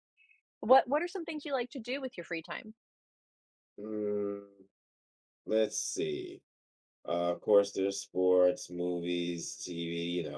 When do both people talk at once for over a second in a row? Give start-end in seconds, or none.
none